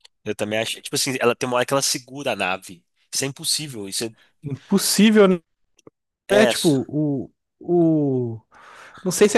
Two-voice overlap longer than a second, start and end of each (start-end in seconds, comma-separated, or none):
none